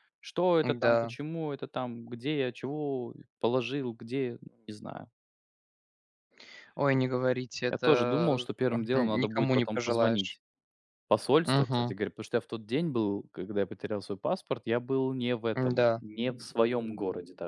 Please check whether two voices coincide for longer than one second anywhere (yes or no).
yes